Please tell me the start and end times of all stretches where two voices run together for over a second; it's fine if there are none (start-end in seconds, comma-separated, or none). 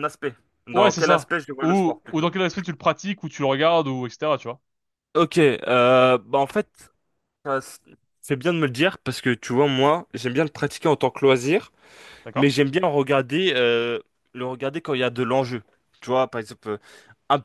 0.7-2.3